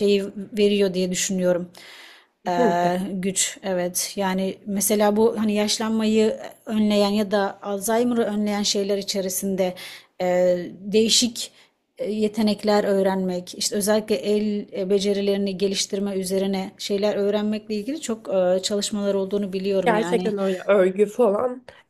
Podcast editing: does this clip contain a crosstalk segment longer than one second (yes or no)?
no